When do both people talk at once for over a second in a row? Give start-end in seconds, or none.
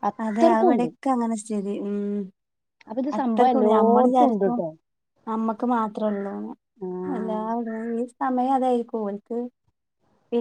3.2-4.6